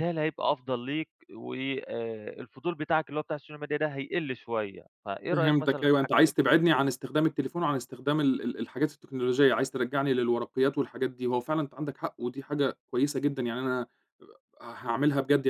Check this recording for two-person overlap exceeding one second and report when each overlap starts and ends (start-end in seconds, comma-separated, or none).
5.3-6.5